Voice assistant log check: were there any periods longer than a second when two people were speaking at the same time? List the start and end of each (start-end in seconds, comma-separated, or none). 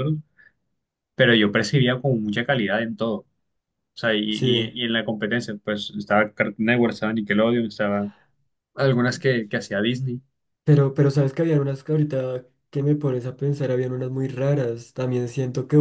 none